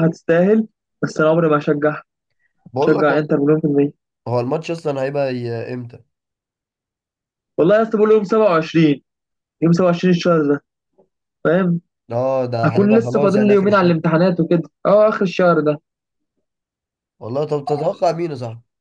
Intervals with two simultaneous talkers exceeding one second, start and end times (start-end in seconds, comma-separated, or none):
12.6-13.9